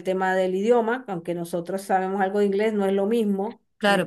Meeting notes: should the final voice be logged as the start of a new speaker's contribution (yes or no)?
yes